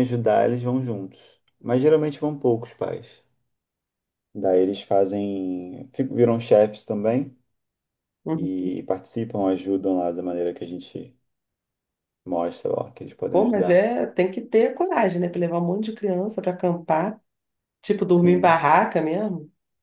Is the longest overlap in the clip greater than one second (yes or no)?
no